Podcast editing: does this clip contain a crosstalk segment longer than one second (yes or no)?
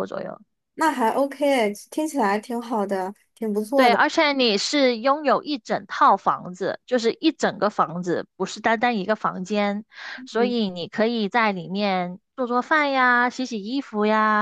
no